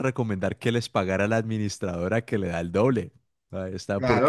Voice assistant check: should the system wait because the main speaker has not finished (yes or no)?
no